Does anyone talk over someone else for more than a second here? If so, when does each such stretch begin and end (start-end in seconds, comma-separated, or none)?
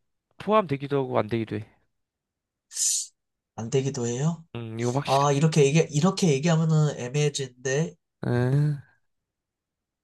none